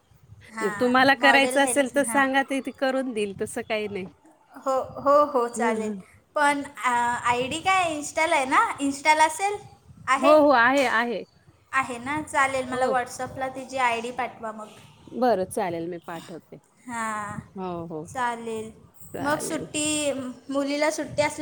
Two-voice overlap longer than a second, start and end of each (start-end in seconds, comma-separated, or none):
0.8-2.2